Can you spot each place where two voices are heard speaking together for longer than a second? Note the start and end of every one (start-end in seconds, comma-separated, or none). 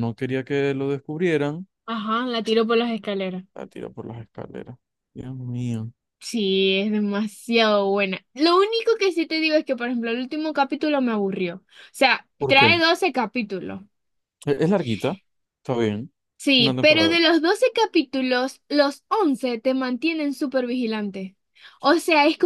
none